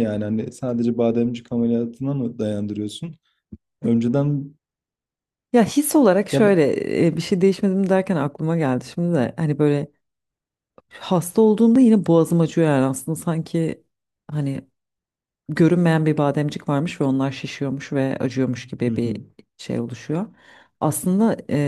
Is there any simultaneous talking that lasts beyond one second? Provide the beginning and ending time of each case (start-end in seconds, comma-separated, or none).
none